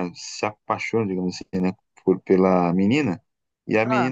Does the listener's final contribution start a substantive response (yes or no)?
no